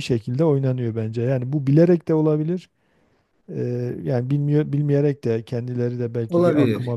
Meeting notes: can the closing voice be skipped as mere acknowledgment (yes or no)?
yes